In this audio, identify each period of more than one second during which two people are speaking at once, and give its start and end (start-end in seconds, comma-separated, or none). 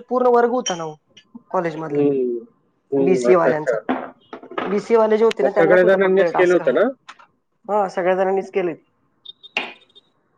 5.4-6.8